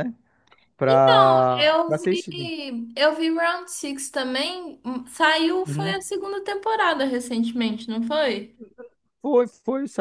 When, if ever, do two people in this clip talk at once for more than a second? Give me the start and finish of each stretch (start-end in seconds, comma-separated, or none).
0.9-2.5